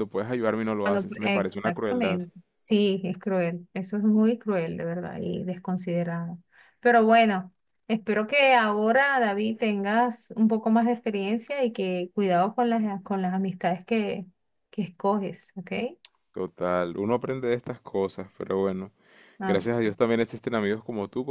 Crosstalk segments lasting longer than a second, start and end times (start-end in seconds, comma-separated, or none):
0.8-2.2